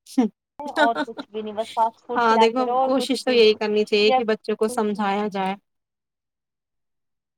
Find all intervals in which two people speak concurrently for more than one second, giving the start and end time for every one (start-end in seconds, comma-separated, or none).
2.2-4.2